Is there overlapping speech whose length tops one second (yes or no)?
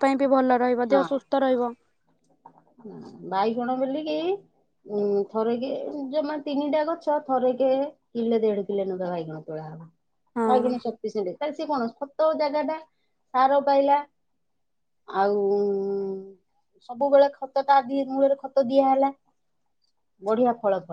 no